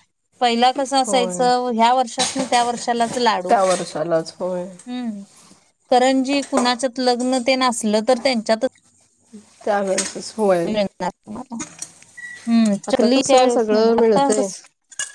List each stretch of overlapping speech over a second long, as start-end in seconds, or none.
12.9-14.5